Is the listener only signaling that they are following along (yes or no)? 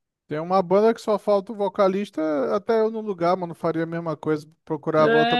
no